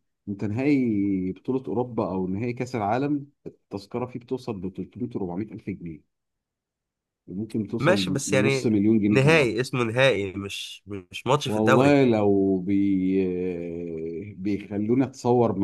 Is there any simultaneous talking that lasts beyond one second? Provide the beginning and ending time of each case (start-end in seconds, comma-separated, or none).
7.8-9.5